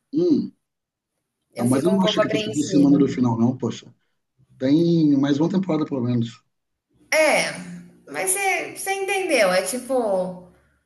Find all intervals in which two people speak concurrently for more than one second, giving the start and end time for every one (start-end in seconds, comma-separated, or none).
1.6-3.0